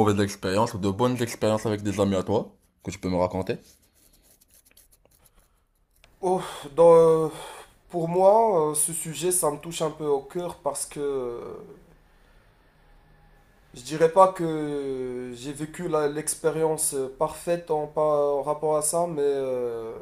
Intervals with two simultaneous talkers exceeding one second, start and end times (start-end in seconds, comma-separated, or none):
none